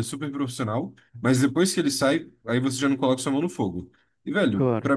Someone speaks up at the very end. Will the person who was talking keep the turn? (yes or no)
yes